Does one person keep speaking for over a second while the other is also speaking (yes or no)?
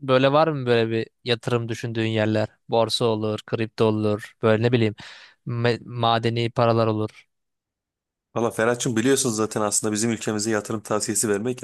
no